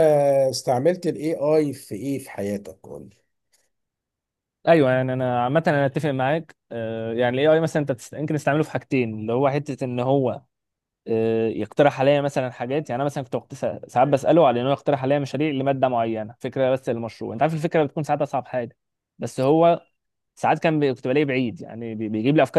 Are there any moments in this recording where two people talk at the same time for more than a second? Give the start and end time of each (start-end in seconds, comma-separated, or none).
none